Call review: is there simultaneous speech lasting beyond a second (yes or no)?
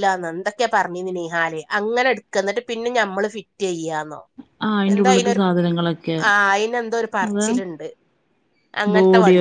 no